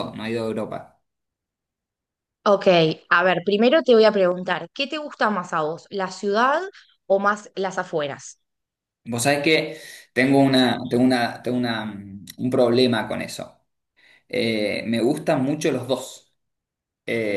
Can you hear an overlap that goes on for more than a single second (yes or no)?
no